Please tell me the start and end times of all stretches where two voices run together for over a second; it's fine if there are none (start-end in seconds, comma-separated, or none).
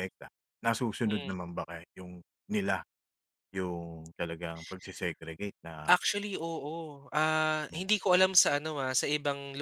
none